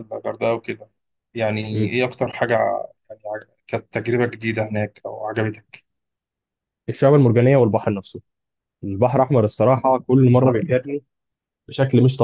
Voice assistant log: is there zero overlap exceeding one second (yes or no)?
yes